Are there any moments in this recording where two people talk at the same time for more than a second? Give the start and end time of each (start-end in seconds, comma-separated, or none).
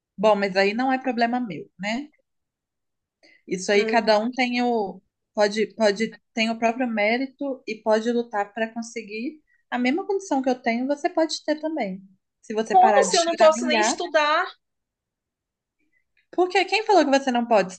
12.6-14.0